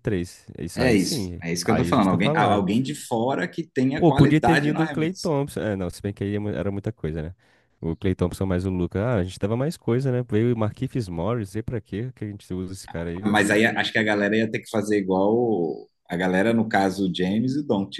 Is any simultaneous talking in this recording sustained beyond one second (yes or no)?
yes